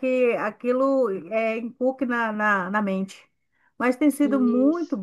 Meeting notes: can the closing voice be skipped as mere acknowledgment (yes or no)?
yes